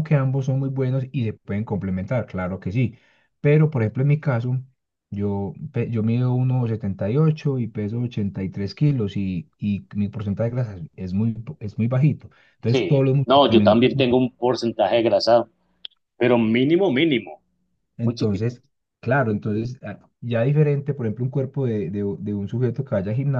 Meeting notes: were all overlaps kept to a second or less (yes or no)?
no